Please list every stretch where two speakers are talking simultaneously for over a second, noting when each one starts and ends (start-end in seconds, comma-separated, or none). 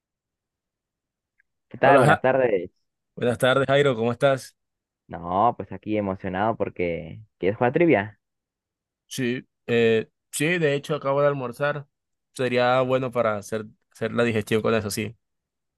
none